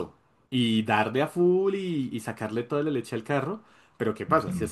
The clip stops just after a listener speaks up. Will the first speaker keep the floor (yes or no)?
yes